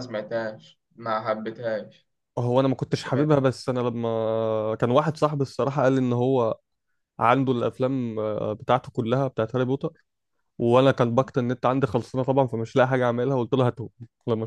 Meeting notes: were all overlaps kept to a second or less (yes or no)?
yes